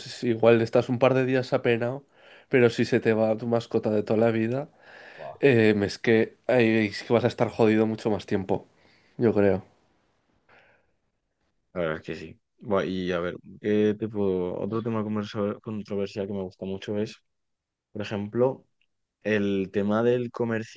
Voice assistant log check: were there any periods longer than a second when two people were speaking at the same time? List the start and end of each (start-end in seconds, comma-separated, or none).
none